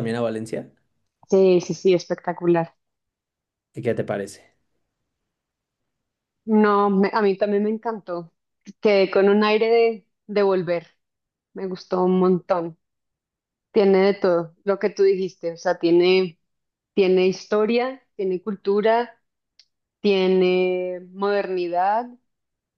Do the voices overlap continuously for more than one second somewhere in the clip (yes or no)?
no